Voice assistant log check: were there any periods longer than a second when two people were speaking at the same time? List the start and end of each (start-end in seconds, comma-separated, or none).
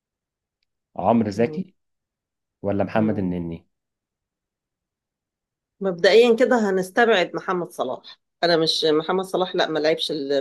none